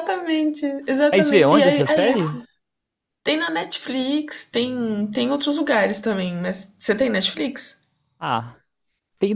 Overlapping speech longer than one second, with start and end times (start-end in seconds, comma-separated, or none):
1.1-2.3